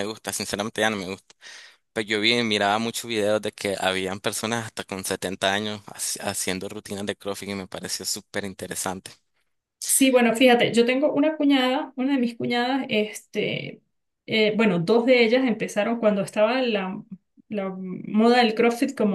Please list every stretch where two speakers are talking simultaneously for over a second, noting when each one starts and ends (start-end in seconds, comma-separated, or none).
none